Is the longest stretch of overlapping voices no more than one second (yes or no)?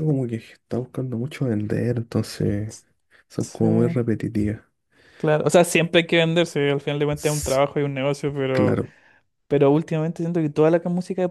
yes